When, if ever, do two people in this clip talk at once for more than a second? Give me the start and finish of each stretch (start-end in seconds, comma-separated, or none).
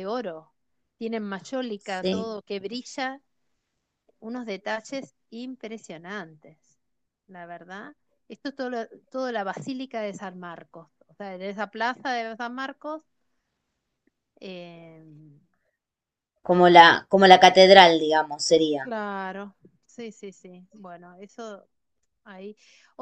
none